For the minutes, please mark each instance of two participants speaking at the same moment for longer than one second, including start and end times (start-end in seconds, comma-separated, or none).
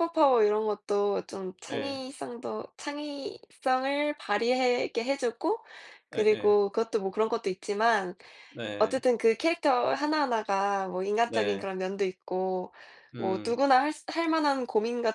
none